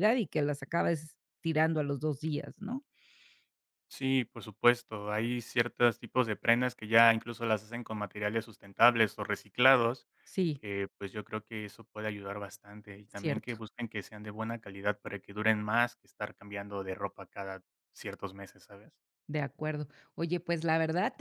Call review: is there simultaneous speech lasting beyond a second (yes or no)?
no